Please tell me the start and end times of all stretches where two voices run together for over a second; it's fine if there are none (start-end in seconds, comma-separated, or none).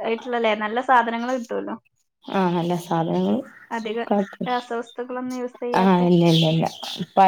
none